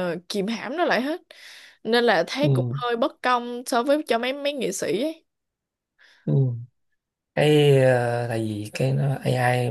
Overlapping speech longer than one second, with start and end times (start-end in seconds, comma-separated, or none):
none